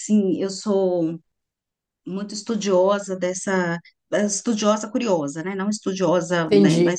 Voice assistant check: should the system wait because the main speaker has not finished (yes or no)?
yes